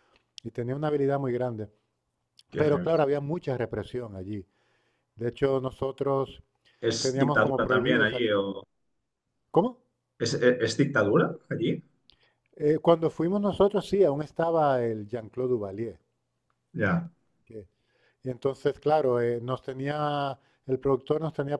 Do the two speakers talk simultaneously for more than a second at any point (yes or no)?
yes